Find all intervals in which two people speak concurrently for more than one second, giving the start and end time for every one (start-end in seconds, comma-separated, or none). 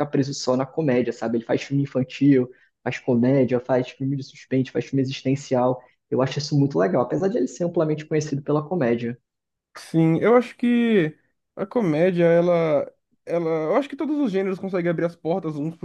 none